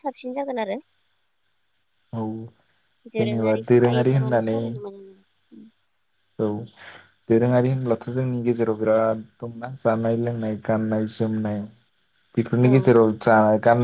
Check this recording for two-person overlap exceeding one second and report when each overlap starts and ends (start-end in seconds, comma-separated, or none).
3.2-4.6